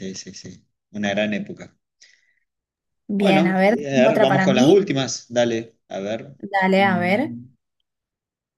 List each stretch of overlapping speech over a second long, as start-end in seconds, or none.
3.2-4.9